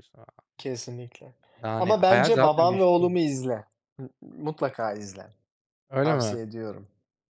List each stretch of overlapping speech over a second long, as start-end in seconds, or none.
1.8-3.2